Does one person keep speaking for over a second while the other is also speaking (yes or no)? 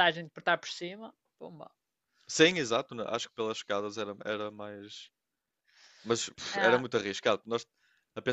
no